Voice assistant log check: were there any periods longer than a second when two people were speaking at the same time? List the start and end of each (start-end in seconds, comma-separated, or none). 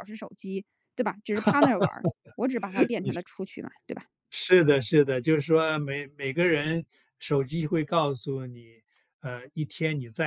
none